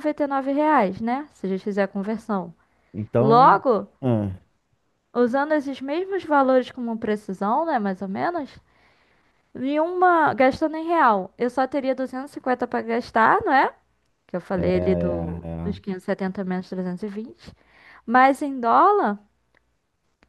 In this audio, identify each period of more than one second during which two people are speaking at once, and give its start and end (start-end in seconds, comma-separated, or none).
14.5-15.9